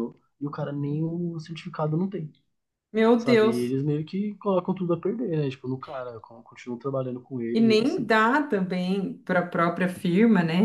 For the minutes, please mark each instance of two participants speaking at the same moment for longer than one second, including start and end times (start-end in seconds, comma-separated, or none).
none